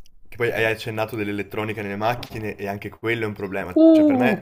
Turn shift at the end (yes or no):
no